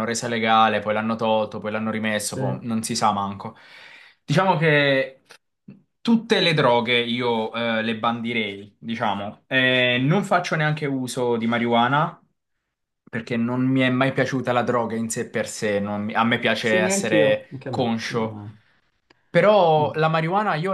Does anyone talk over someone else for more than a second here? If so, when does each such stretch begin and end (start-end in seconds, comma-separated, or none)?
16.6-18.4